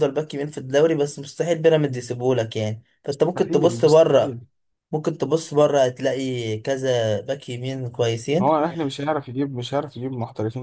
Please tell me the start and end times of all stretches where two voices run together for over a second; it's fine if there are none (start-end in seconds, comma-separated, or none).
3.1-4.4